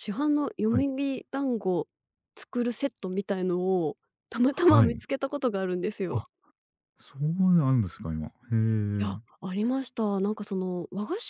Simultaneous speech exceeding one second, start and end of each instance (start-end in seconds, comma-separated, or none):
none